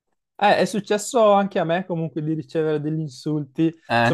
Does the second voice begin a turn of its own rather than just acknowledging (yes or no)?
no